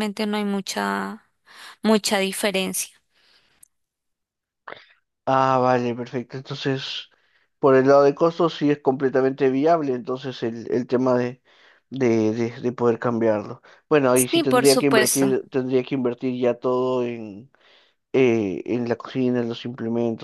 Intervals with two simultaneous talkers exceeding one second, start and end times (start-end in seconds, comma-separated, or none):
14.1-15.4